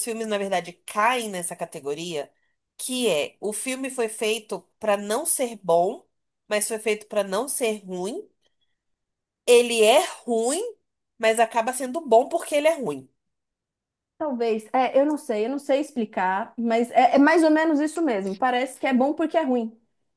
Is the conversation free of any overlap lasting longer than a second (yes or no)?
yes